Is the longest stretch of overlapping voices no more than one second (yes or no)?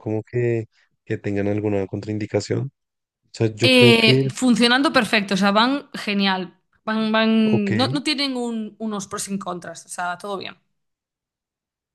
yes